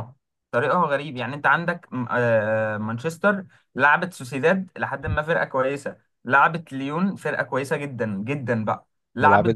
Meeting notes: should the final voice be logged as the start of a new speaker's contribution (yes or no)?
no